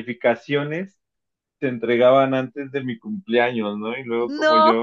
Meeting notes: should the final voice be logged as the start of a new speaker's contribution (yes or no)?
no